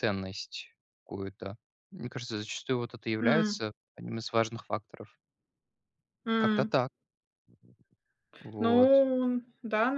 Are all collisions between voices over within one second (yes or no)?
yes